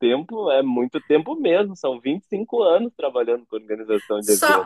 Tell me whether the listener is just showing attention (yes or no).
no